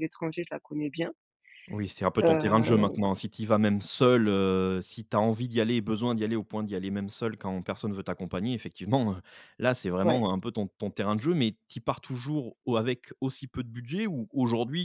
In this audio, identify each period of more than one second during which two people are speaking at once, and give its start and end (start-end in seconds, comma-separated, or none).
none